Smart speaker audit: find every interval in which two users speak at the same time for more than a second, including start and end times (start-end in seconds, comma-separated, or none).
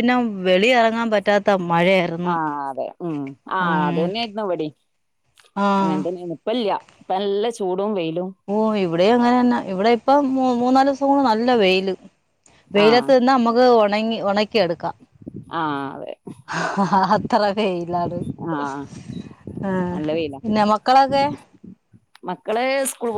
none